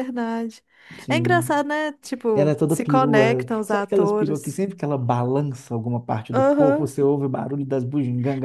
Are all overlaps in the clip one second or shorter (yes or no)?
no